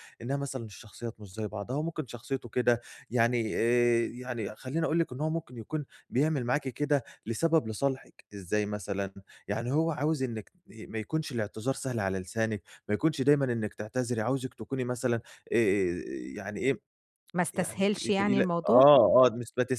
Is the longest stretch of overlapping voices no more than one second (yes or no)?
no